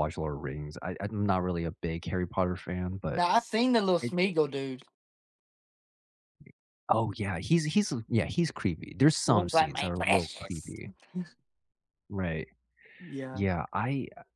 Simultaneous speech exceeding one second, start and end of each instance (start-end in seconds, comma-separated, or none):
9.2-10.8